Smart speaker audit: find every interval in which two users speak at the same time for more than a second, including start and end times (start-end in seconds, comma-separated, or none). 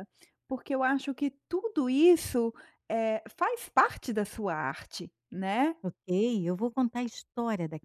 none